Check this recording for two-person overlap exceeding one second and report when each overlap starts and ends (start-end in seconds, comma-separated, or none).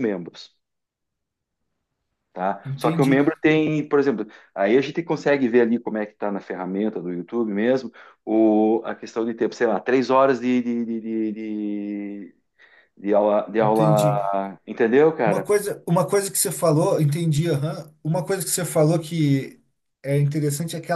none